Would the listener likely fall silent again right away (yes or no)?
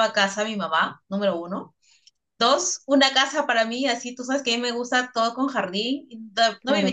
yes